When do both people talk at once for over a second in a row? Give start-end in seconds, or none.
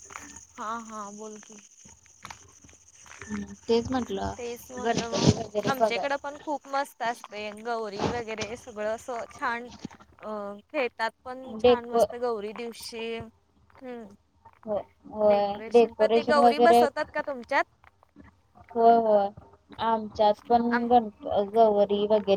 4.4-6.1